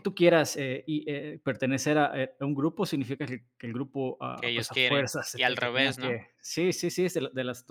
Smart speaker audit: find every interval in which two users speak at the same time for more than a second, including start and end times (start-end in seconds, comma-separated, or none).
4.3-6.2